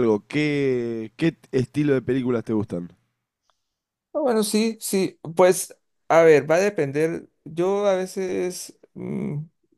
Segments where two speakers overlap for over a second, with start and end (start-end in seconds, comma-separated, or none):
none